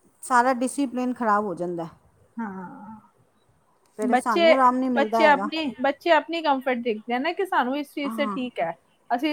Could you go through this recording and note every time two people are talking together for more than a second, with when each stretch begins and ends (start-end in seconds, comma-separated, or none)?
4.1-5.5